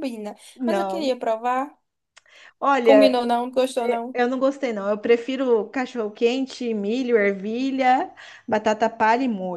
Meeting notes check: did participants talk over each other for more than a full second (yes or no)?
no